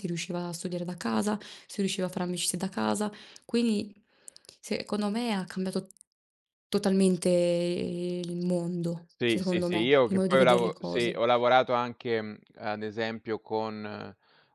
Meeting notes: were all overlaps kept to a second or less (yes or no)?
no